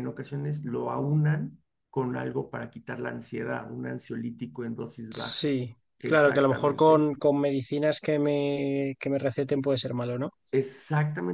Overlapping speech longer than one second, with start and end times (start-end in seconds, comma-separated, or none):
5.1-7.0